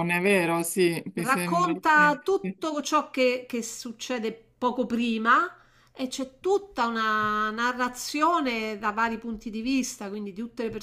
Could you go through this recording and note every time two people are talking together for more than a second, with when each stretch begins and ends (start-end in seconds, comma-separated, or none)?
1.1-2.6